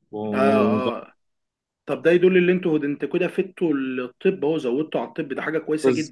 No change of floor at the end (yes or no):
no